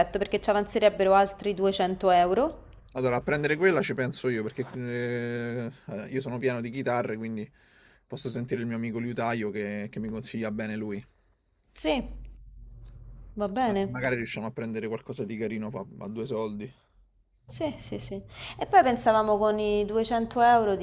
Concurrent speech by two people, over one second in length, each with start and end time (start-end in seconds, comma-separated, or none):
none